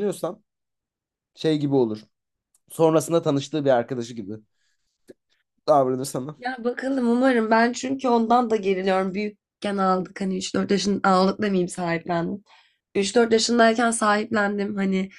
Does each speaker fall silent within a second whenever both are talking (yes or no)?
yes